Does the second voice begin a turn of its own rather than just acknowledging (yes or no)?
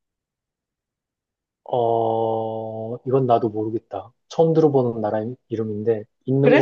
yes